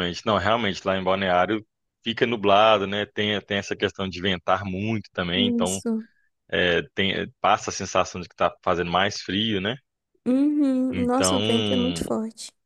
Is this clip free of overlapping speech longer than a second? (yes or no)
yes